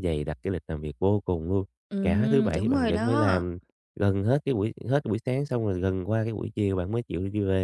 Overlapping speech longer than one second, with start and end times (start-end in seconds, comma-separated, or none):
2.0-3.4